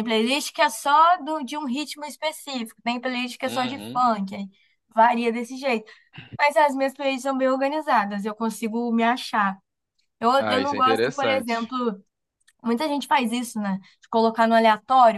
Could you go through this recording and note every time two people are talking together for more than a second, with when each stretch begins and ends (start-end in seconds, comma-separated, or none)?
10.4-11.7